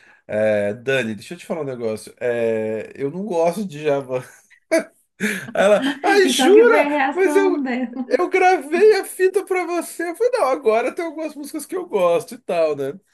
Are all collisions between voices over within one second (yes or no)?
no